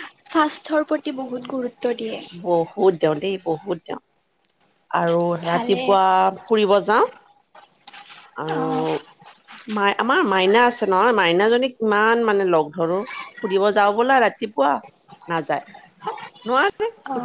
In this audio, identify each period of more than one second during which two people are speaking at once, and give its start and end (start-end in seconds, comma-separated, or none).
none